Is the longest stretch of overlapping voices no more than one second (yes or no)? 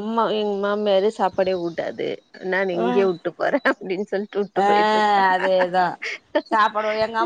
yes